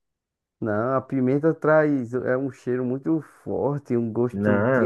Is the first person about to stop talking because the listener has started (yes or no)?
yes